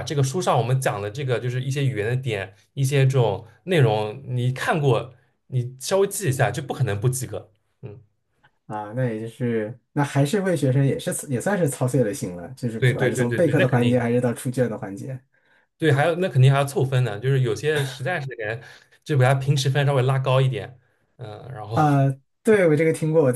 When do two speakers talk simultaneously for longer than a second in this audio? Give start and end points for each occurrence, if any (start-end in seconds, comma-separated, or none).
12.8-14.0